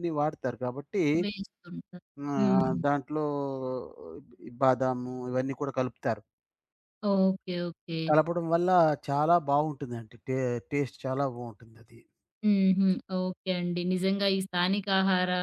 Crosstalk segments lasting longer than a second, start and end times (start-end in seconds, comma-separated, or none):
none